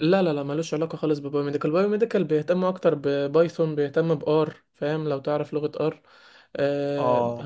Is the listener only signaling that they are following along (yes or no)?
no